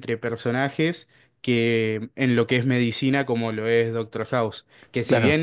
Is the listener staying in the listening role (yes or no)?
yes